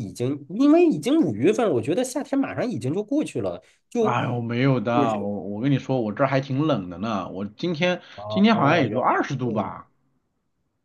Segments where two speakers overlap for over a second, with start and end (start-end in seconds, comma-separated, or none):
8.2-9.7